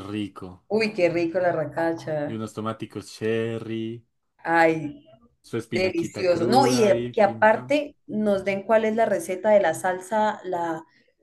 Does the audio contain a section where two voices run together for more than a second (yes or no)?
yes